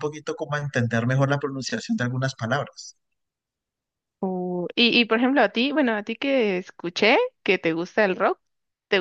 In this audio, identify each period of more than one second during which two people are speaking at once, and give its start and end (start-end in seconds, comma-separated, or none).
none